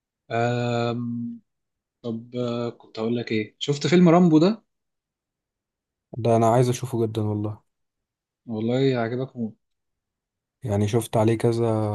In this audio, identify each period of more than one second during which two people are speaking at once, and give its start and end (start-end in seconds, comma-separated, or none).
none